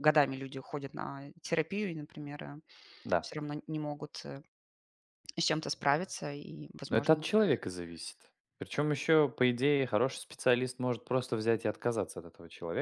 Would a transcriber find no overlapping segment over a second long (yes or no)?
yes